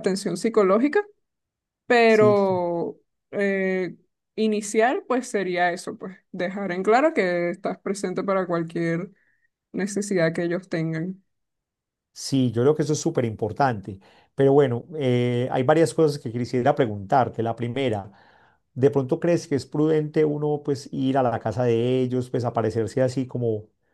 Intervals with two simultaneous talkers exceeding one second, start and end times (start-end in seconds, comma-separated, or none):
none